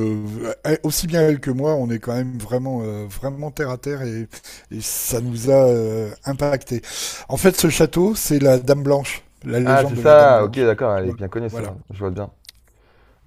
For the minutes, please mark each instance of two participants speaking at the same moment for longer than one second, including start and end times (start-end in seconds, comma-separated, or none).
9.6-11.7